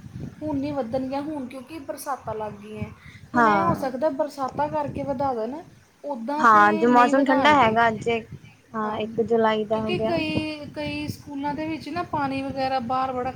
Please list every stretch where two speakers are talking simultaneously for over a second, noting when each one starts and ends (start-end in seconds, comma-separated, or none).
6.4-7.8